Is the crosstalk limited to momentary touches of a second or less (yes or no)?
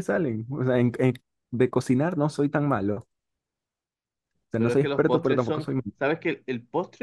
no